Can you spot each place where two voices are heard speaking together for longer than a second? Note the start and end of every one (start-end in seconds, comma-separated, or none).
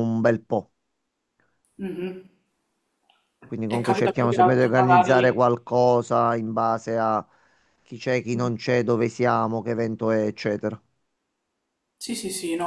3.7-5.6